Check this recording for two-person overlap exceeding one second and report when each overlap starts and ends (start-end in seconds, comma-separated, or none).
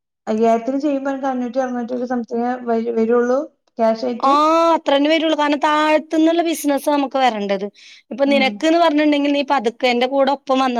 none